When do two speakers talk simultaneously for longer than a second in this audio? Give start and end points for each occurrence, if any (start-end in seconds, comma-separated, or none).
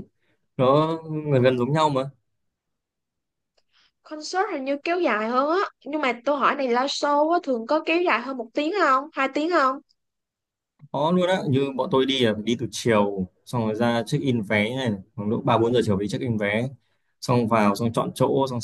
none